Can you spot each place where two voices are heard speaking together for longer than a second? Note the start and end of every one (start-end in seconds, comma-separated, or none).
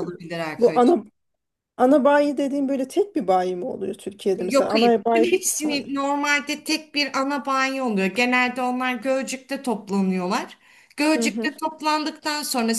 4.4-5.8